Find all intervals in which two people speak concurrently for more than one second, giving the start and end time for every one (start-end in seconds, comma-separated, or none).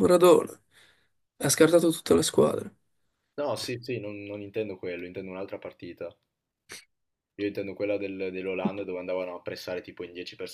none